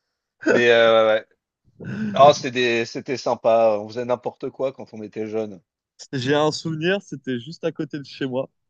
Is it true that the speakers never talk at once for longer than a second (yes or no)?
yes